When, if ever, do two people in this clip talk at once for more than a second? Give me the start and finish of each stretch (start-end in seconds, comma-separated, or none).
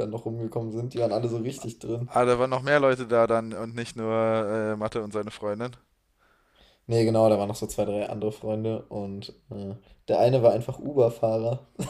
none